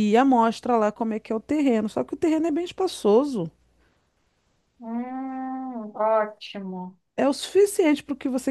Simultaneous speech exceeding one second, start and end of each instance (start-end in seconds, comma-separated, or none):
none